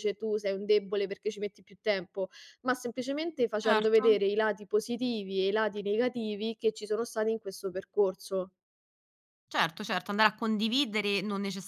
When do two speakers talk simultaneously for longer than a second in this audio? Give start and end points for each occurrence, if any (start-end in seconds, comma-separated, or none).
none